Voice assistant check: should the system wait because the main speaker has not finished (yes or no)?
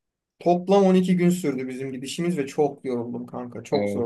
no